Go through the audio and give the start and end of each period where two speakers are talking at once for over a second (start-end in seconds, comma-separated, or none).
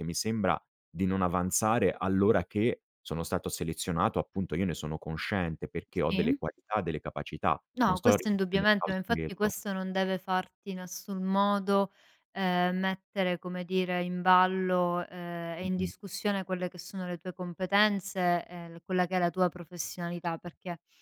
7.8-9.5